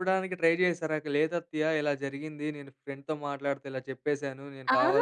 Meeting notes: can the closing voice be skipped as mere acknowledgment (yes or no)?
no